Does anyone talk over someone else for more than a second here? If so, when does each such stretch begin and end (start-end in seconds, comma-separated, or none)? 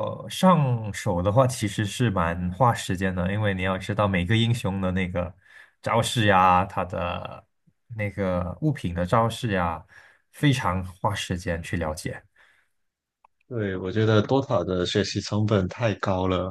none